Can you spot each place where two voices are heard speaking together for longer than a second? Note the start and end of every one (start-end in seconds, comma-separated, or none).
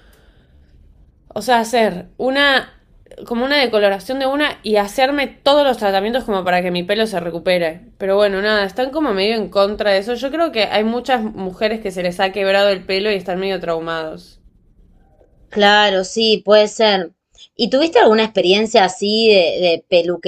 none